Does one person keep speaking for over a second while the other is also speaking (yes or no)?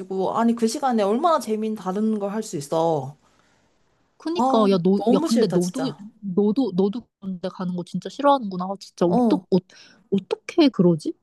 yes